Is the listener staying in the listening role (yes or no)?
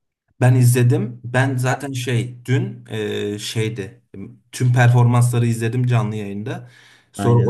yes